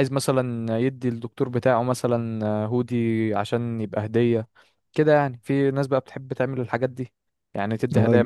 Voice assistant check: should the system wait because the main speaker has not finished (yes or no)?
no